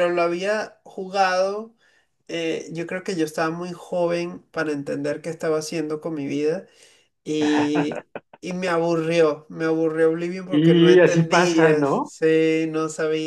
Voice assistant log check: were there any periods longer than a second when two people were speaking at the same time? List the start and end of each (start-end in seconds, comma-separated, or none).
10.5-12.1